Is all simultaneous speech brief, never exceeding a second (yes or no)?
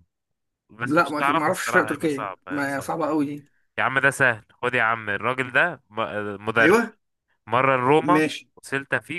no